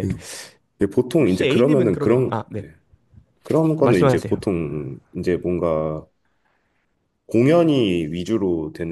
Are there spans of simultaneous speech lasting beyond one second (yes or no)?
yes